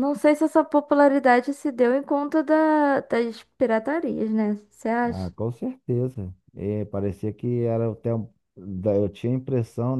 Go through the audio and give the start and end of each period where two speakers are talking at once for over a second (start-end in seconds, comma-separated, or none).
none